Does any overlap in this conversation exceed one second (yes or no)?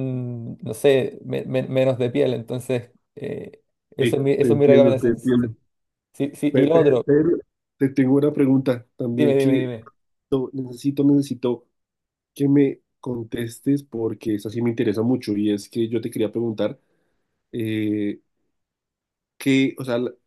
yes